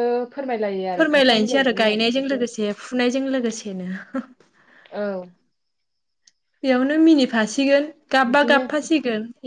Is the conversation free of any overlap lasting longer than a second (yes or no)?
no